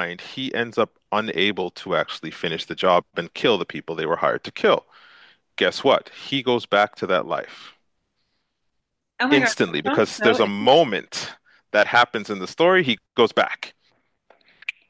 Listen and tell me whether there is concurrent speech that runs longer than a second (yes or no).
yes